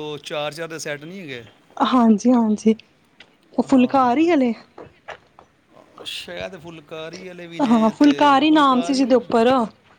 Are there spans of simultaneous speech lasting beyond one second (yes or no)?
yes